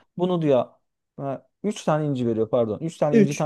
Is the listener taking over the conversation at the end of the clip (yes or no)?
no